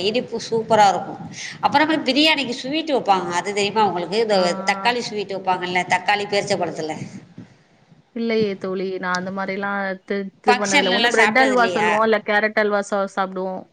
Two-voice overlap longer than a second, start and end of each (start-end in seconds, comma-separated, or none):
10.5-11.9